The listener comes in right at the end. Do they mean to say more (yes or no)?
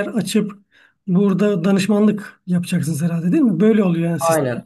yes